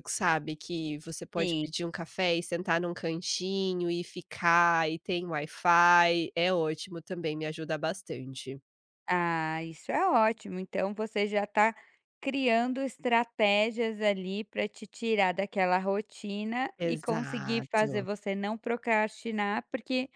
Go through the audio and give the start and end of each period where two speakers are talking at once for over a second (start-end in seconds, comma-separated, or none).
16.8-18.1